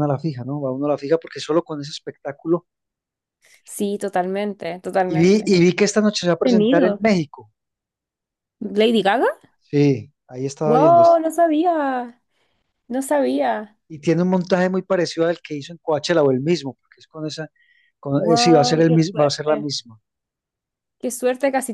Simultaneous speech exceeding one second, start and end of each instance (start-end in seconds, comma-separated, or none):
18.1-19.7